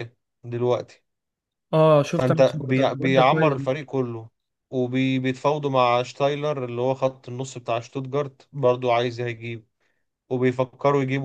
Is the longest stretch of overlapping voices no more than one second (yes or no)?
no